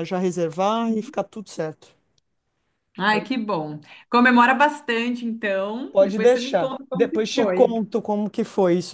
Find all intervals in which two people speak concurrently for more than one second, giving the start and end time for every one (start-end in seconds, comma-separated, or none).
5.9-7.8